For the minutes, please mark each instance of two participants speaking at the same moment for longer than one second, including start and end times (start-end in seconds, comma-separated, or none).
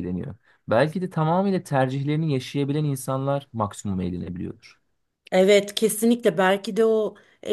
none